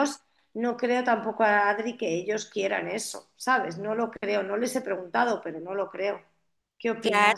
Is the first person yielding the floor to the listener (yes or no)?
yes